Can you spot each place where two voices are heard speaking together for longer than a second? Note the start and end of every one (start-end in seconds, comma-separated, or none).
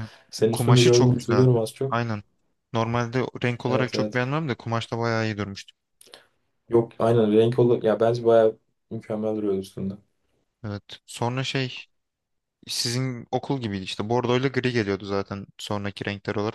0.5-1.9